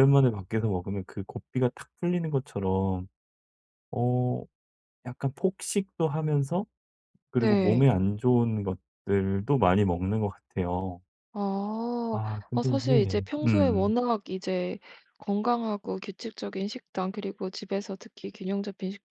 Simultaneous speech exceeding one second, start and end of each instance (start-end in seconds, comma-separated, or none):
12.1-13.9